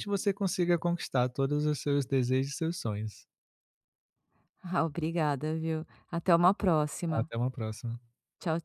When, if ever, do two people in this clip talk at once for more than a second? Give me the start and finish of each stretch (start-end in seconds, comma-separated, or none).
none